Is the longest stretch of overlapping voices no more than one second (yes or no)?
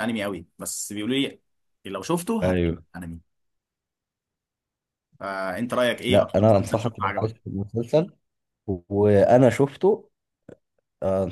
no